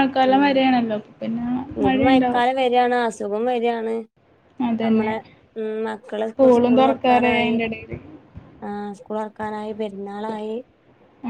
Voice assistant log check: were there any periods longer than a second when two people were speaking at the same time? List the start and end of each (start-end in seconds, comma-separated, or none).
6.3-7.5